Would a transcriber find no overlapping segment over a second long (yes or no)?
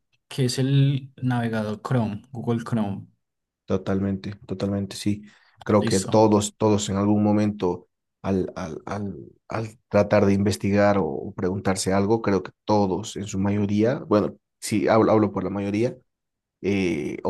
yes